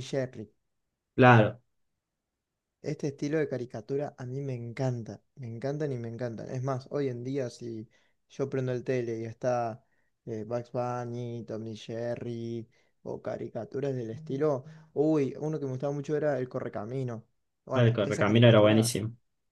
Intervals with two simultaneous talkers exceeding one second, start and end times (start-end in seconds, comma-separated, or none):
17.7-18.9